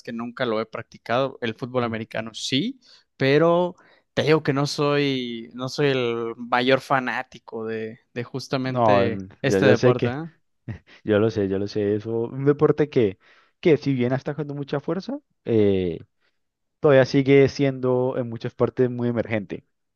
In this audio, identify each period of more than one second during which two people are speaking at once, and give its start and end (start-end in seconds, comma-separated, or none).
8.6-10.2